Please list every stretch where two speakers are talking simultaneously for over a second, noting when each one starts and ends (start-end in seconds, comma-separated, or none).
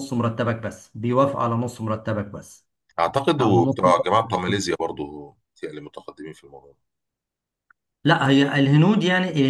3.4-4.6